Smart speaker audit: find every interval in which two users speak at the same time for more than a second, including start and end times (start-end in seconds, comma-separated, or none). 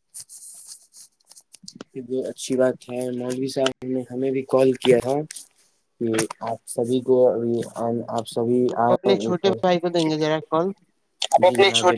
none